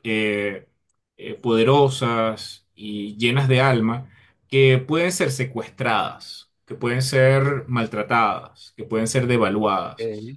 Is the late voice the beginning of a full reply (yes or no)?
no